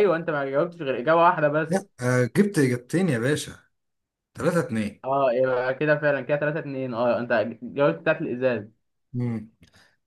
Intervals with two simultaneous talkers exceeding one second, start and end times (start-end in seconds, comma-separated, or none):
none